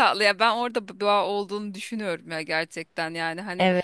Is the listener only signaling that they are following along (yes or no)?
yes